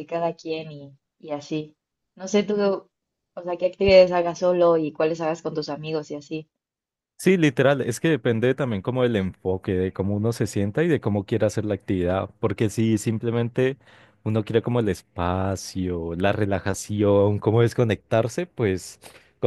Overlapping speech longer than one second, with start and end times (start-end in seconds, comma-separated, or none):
none